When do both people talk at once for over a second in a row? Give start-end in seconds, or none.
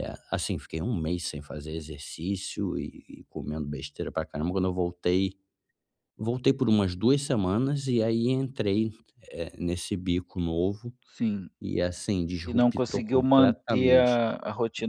12.4-14.2